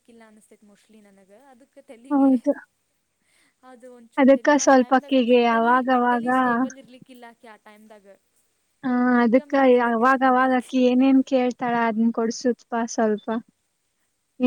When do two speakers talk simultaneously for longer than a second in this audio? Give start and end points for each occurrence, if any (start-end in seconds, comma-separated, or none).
4.2-6.3